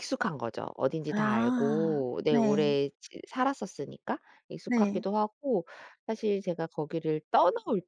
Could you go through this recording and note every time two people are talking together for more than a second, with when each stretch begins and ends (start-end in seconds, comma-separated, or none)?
1.1-2.8